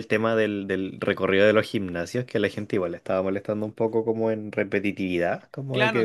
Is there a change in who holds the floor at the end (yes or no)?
yes